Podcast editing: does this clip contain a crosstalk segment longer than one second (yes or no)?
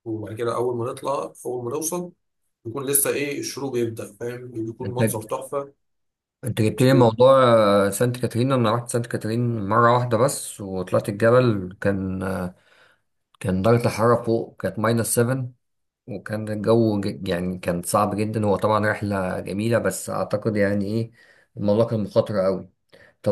no